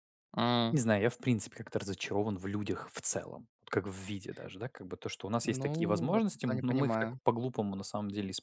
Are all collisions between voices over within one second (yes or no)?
no